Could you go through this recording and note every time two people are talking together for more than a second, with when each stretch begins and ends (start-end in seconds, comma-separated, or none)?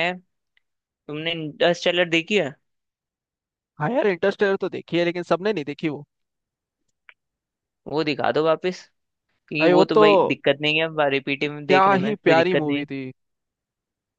11.5-12.8